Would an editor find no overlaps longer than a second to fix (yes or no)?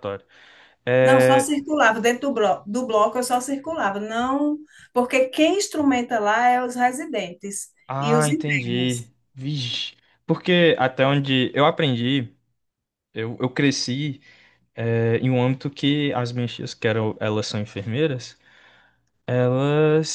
no